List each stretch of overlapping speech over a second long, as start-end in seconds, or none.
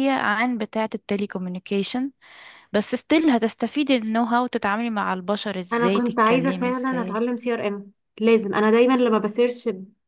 5.7-7.2